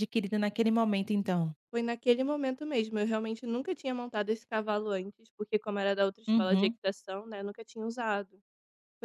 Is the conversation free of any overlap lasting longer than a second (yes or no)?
yes